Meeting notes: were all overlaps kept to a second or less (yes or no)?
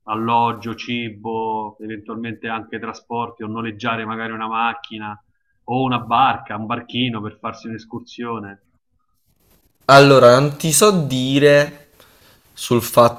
yes